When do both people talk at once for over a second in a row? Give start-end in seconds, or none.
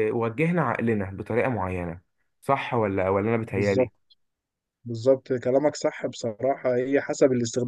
none